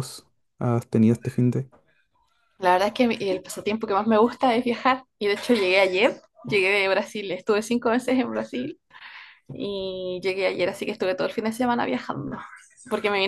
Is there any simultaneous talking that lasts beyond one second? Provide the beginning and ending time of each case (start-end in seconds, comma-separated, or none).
none